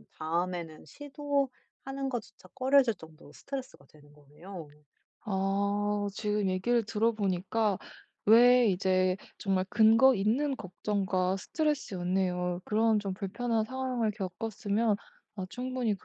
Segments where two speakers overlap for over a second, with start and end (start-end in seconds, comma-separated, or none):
none